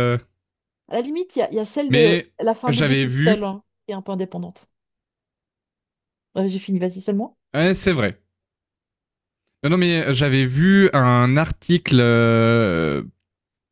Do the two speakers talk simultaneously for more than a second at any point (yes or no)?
yes